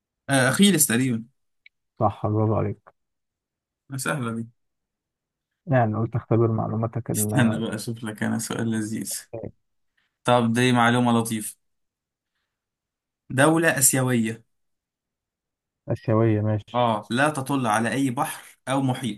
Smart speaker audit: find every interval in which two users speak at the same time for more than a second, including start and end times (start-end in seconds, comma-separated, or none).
none